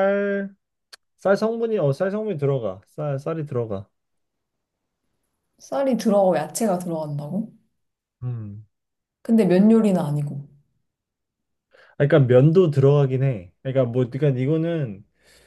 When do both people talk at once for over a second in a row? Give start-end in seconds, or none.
none